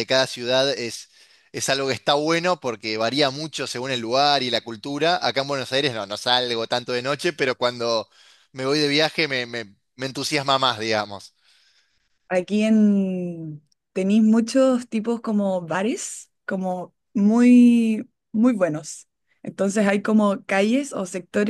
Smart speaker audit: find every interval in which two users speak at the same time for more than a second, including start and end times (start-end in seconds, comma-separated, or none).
none